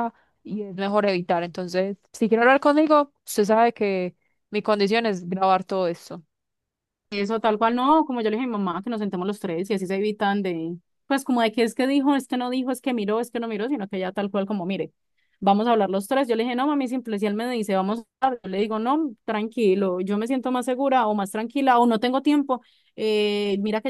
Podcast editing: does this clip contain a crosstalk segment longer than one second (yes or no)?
no